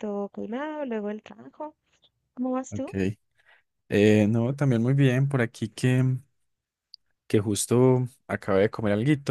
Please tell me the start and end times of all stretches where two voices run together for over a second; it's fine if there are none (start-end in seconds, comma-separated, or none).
none